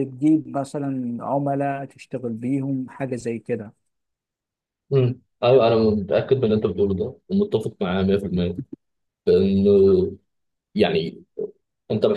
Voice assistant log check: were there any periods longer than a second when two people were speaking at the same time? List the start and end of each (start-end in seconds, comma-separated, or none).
none